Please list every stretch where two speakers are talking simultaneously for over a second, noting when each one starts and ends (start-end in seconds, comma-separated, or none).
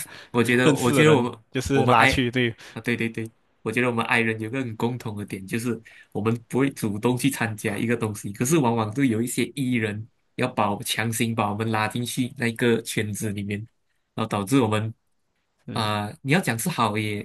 0.6-2.1